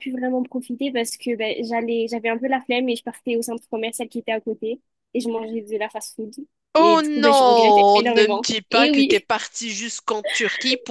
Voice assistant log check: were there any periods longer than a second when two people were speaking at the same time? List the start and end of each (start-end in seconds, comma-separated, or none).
6.8-9.3